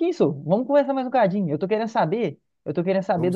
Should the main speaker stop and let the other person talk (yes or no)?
no